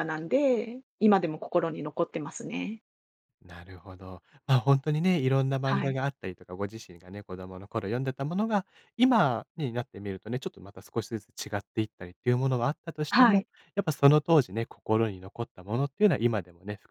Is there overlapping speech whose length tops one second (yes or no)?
no